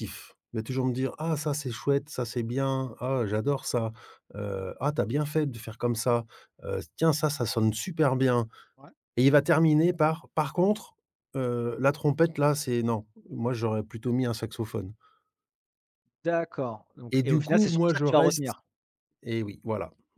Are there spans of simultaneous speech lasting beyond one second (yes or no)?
yes